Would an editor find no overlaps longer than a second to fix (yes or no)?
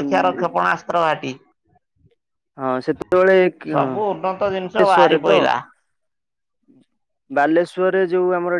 no